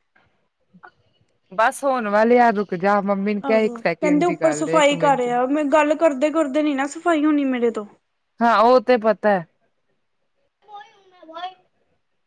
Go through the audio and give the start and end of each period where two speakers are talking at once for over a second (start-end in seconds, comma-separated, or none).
3.5-5.3